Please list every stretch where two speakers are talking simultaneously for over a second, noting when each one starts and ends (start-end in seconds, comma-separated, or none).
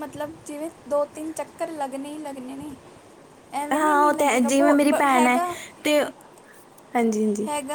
3.7-5.4